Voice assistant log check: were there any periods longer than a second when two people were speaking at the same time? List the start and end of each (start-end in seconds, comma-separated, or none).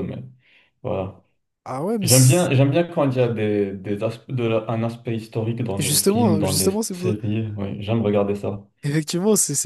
5.8-7.1